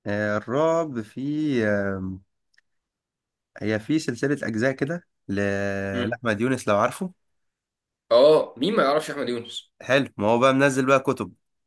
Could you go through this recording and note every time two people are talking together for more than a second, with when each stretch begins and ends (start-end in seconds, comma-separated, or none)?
none